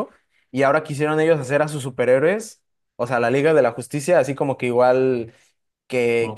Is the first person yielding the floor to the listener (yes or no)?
no